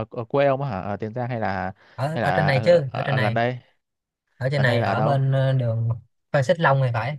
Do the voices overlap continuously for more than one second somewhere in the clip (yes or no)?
yes